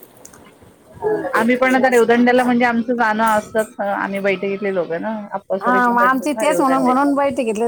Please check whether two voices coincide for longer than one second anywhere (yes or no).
yes